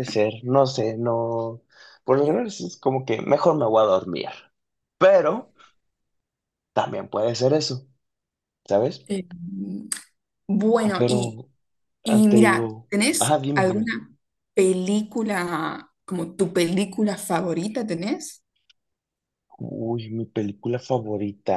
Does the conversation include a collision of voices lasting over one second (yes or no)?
yes